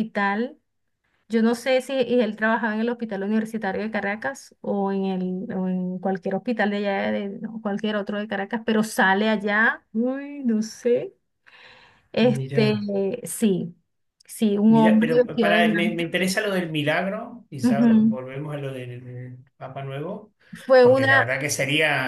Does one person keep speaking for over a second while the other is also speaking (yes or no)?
yes